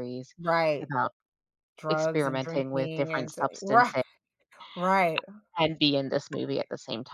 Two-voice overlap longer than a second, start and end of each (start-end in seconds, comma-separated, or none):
1.9-3.9